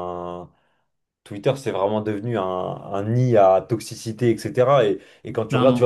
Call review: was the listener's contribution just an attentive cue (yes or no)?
yes